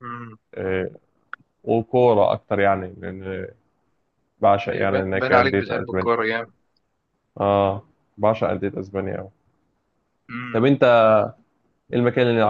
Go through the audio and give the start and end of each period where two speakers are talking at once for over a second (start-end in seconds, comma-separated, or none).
4.7-6.1